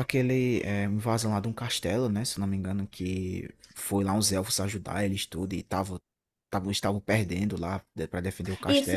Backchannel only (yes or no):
no